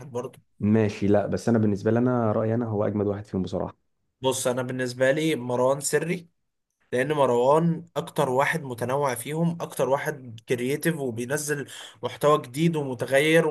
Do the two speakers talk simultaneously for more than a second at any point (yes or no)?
no